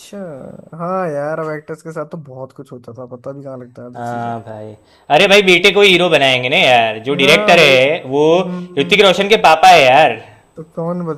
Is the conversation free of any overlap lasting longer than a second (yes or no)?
yes